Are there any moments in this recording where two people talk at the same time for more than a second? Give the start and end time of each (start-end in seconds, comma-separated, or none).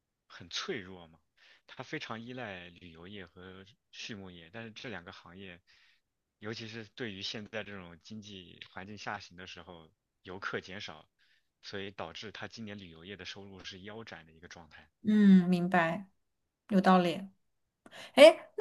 none